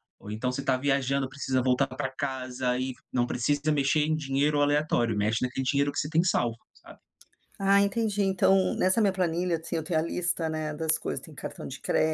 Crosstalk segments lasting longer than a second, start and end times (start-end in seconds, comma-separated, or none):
none